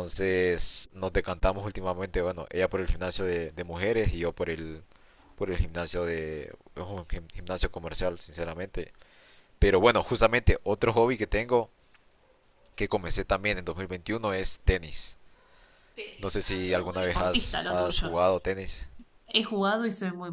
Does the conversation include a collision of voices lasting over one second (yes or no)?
yes